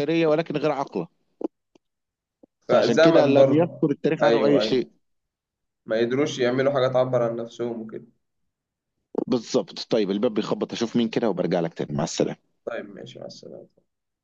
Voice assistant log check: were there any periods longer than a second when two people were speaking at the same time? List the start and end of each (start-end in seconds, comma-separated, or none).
2.7-4.9